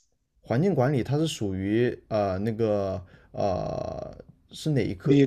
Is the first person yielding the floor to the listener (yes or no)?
yes